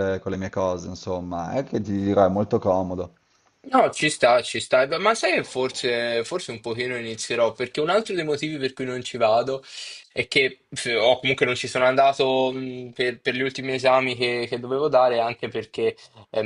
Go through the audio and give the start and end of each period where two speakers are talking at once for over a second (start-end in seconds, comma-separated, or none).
none